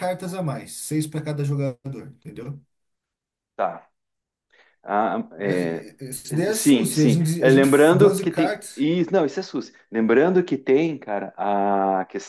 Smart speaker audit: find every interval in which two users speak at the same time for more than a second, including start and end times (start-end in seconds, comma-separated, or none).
6.5-8.9